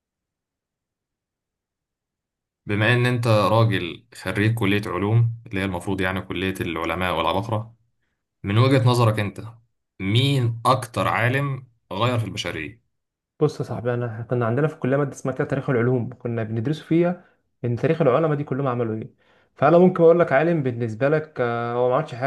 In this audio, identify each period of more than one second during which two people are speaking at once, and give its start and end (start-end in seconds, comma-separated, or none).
none